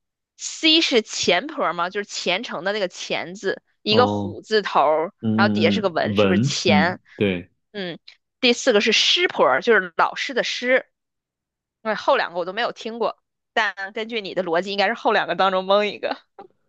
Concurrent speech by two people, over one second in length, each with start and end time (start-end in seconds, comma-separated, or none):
5.2-7.0